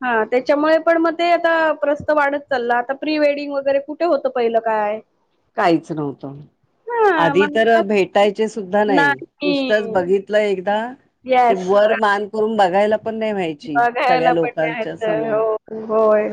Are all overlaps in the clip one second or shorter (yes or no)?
no